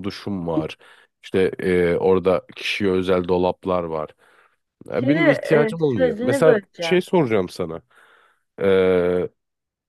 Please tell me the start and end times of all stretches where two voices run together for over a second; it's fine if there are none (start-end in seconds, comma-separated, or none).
4.9-7.0